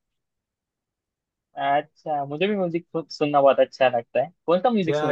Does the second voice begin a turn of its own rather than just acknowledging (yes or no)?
yes